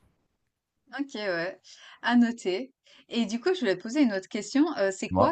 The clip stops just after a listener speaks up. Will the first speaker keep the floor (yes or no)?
yes